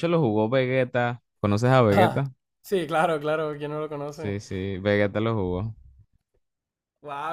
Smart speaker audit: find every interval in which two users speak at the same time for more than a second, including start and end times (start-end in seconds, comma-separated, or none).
none